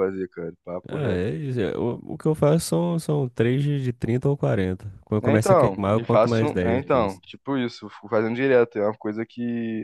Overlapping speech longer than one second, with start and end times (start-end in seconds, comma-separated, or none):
5.2-7.2